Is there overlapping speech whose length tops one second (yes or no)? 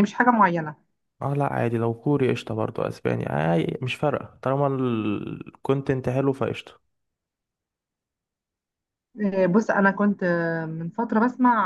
no